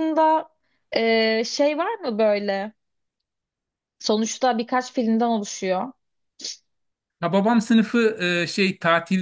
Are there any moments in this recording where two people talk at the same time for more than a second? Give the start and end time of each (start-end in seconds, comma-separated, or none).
none